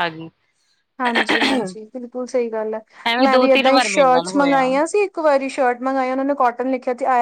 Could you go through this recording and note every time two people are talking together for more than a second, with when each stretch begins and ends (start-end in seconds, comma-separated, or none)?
3.2-4.7